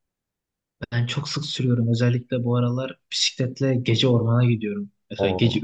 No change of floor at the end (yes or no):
yes